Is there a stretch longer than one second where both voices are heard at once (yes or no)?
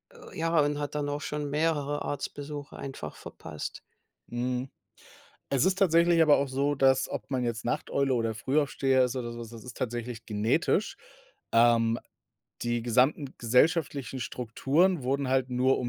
no